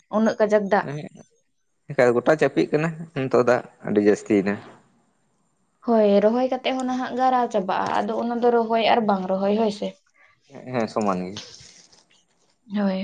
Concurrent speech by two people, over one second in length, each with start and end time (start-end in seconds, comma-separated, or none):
none